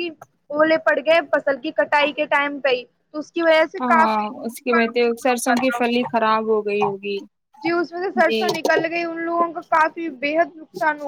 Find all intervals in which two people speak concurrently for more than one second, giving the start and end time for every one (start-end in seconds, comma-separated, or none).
3.8-5.8